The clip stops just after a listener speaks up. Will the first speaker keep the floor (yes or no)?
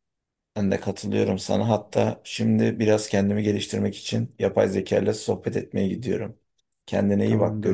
no